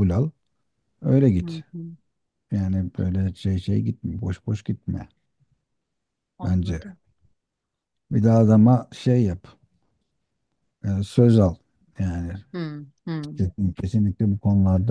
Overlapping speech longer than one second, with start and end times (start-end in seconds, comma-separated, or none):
none